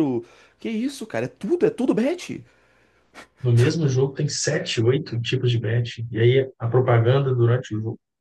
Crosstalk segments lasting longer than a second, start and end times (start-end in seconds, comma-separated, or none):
none